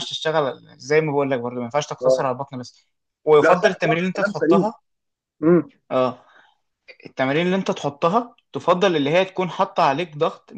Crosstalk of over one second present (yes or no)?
yes